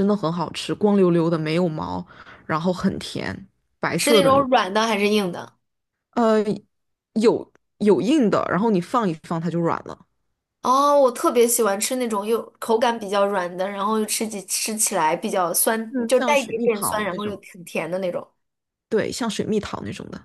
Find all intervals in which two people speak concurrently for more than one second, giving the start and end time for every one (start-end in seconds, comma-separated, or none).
15.9-17.4